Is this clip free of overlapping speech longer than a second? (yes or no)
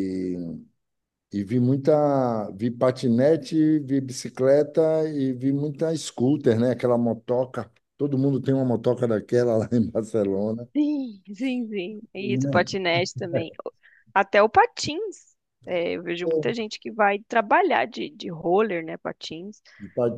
yes